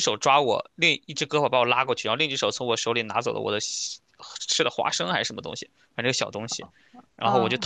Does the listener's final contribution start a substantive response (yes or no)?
no